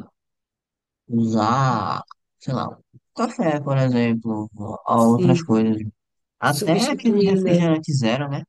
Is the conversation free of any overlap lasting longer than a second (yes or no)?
no